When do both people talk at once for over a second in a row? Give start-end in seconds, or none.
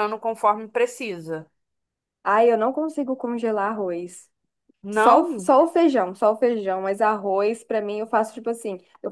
none